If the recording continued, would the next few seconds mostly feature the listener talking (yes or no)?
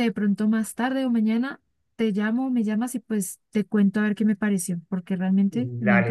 yes